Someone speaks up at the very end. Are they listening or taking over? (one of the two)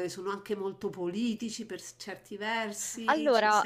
listening